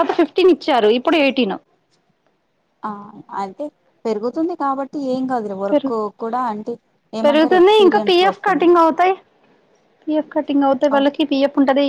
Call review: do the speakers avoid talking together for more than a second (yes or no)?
no